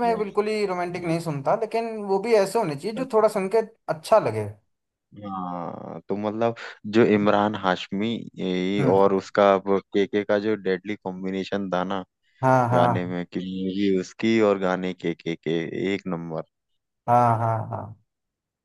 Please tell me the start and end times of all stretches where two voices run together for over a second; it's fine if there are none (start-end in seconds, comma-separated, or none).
none